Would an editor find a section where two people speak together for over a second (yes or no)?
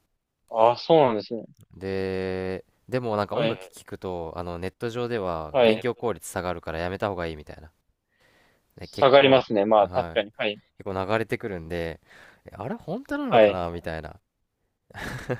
yes